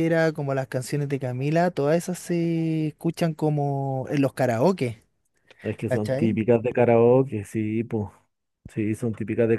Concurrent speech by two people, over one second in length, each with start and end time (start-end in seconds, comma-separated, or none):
none